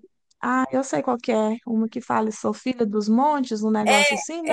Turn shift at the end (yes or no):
yes